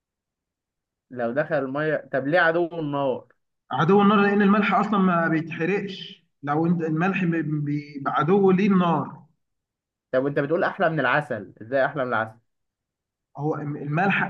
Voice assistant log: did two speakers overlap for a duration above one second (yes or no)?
no